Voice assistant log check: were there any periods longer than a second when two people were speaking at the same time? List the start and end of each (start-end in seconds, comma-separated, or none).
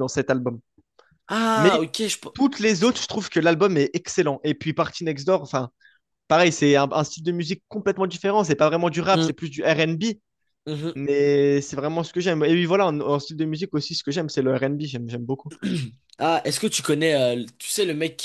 none